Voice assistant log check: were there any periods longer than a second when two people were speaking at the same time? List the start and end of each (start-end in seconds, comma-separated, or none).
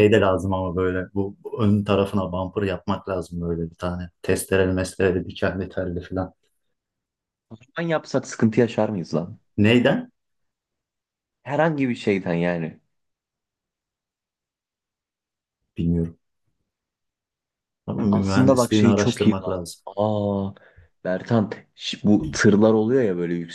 18.1-19.8